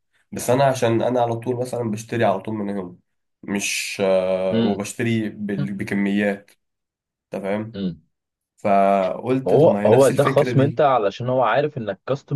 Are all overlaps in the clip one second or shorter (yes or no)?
no